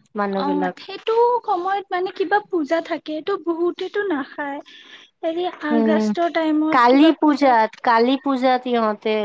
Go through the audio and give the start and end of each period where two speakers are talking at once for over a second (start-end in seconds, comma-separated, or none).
none